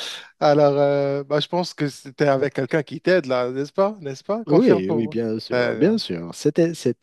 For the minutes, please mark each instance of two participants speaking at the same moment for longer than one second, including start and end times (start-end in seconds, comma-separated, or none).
4.5-6.0